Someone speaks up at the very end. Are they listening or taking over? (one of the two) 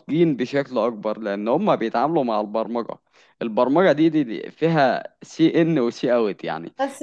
taking over